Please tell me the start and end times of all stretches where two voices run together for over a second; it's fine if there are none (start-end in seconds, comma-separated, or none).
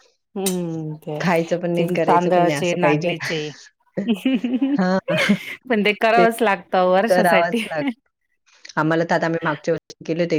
1.2-3.1